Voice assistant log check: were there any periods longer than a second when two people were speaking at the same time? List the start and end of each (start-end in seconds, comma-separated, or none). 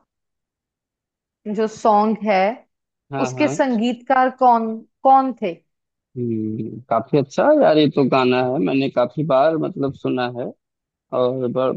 none